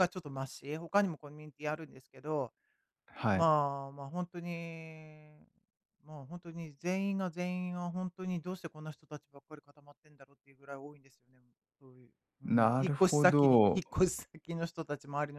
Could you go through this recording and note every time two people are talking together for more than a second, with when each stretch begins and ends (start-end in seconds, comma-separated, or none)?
12.5-13.8